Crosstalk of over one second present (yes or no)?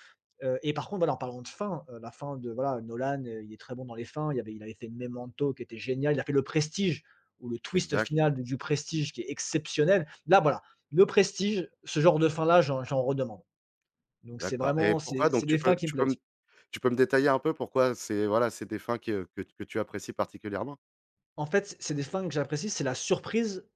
yes